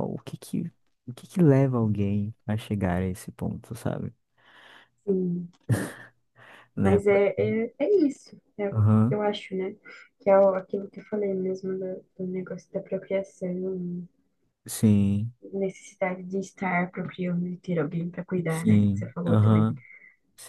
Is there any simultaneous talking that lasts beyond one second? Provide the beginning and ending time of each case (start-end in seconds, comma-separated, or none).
18.5-19.7